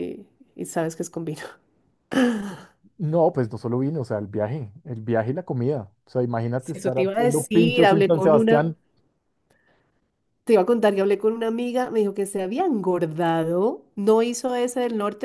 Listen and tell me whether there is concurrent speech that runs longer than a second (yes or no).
yes